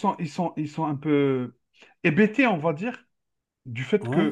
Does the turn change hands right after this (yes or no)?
no